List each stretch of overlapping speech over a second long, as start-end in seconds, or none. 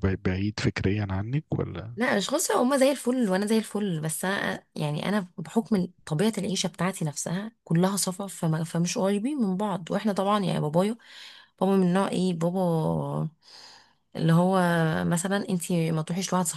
none